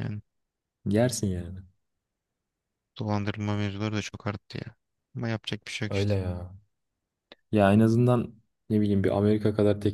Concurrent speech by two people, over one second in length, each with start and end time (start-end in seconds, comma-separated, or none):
none